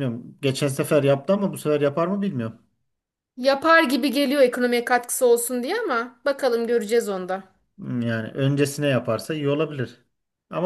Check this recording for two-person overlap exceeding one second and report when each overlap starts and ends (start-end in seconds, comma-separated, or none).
none